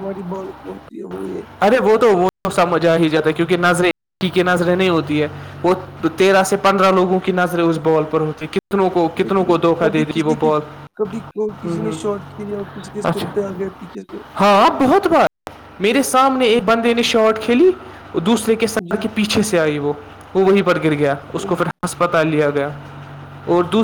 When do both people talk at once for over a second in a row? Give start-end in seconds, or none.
none